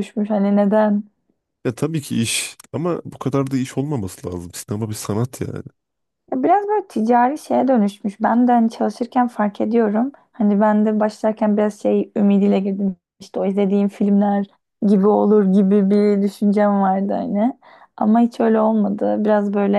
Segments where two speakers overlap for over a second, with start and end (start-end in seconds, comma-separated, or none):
none